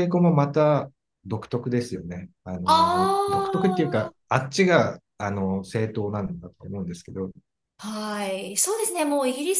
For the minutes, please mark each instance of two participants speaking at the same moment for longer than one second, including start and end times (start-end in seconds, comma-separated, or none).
2.7-4.1